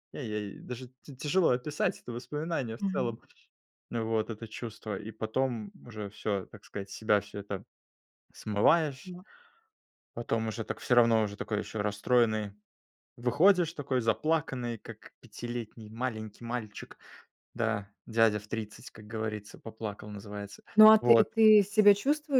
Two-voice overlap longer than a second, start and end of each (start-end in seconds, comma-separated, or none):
none